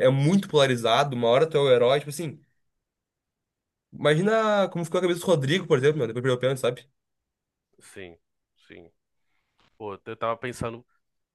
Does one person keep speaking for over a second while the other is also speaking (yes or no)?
no